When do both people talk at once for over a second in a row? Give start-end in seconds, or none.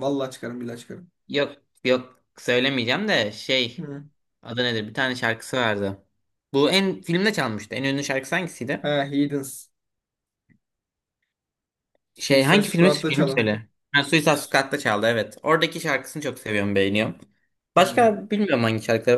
12.2-13.5